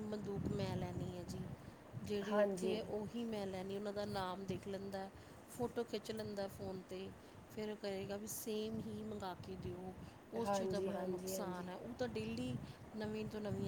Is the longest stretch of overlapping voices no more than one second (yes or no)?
no